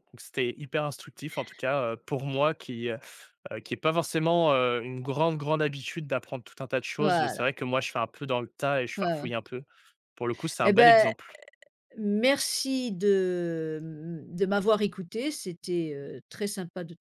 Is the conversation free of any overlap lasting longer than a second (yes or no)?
yes